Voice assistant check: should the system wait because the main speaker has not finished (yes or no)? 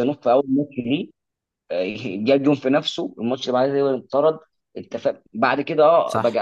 yes